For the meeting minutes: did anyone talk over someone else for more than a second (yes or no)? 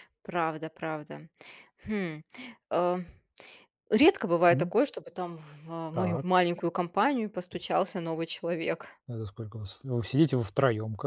no